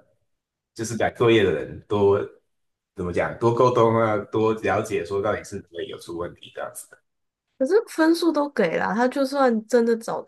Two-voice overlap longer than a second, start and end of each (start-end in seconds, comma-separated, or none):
none